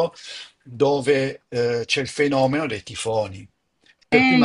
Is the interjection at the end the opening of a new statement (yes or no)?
no